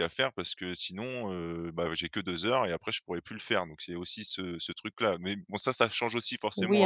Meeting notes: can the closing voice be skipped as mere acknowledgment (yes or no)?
no